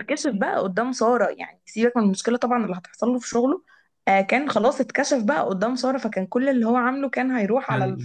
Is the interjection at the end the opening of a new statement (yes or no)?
yes